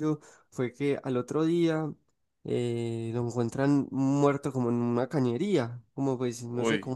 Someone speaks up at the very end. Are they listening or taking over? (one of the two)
listening